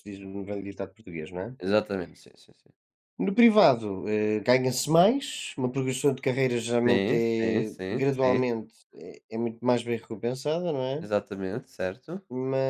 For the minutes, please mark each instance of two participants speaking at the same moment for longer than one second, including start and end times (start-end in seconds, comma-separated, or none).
6.9-8.5